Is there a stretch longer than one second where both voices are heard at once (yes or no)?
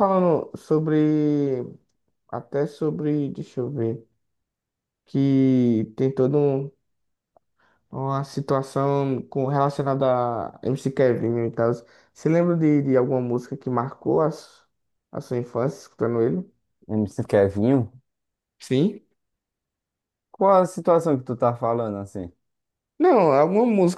no